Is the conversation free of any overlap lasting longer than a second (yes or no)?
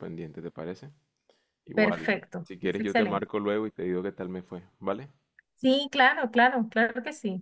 no